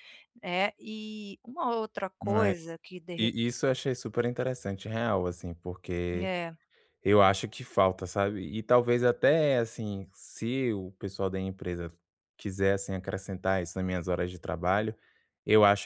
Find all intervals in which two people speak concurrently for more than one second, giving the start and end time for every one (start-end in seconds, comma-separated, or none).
none